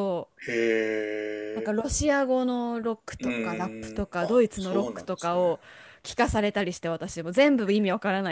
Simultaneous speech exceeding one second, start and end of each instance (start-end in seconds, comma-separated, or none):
3.2-5.4